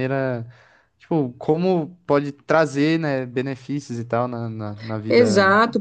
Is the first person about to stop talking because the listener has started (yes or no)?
yes